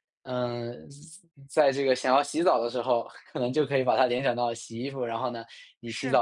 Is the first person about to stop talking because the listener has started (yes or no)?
no